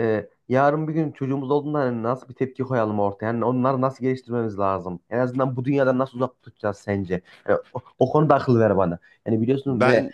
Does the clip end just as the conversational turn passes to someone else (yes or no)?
no